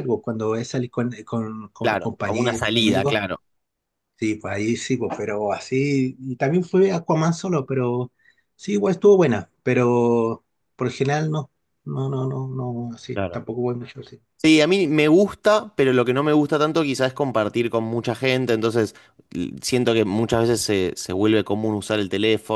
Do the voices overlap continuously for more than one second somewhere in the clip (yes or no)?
yes